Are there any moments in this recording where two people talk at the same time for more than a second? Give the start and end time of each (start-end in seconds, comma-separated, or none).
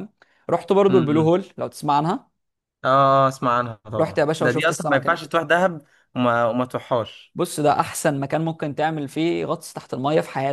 4.0-5.2